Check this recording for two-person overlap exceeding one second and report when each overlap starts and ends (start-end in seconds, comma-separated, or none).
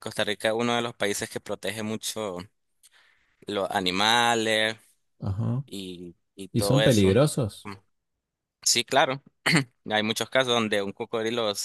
none